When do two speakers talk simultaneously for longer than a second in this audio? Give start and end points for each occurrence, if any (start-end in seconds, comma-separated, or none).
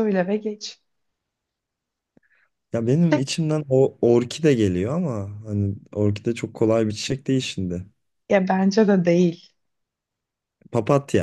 none